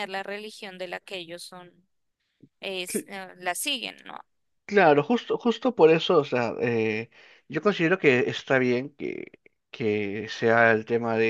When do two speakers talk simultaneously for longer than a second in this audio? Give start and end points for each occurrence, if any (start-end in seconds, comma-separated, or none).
none